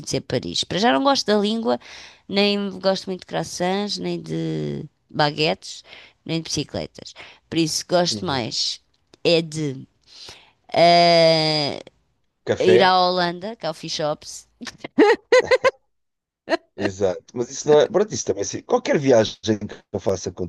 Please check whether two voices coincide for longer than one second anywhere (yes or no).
no